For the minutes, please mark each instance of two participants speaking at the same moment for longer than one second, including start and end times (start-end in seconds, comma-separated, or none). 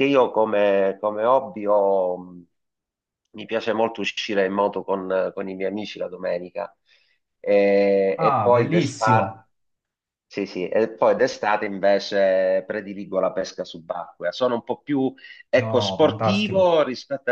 8.2-9.4, 15.5-16.7